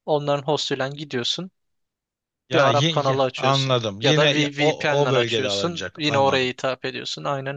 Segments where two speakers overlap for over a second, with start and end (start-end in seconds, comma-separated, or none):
2.5-6.5